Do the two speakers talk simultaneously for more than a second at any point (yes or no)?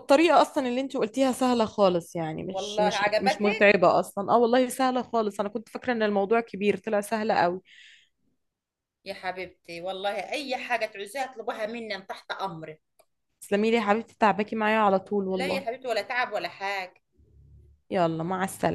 yes